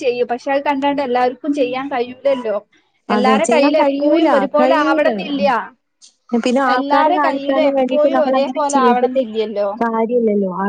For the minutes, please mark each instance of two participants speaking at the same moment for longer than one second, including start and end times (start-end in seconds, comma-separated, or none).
3.1-5.1, 6.8-9.2